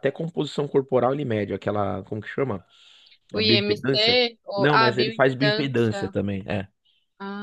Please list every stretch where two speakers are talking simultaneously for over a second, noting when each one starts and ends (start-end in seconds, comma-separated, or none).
4.5-6.0